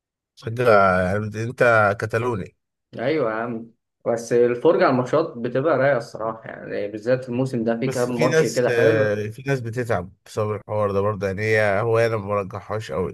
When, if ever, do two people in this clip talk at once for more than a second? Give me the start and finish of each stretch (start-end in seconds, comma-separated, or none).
7.8-9.2